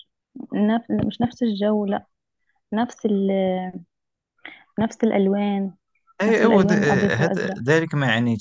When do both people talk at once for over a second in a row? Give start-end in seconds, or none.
6.3-7.6